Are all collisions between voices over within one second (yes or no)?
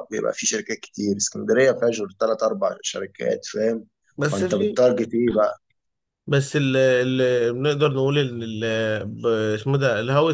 yes